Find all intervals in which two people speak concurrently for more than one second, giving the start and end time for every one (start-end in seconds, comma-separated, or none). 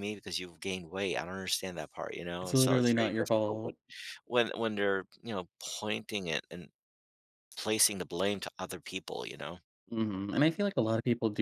2.4-3.7